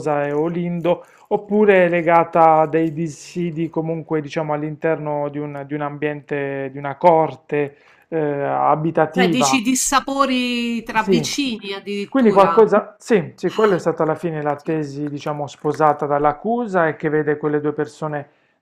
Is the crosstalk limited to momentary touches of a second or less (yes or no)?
yes